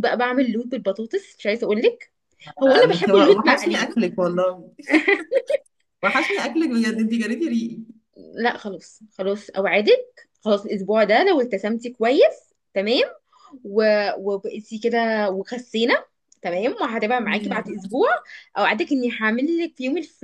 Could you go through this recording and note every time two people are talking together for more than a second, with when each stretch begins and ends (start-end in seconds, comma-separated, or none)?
2.6-3.9